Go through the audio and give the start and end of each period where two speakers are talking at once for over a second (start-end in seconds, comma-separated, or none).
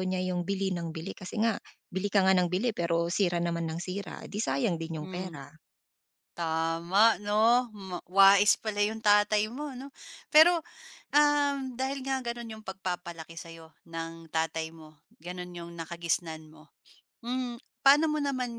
none